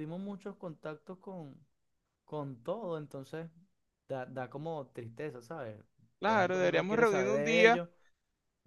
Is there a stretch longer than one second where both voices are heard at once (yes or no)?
yes